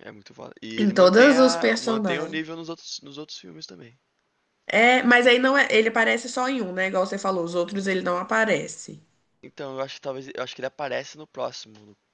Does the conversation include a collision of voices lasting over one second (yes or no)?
yes